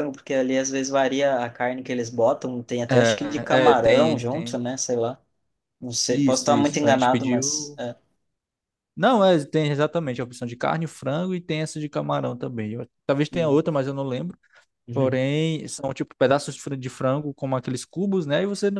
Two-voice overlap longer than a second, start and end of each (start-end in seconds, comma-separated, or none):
2.9-4.6, 6.1-7.8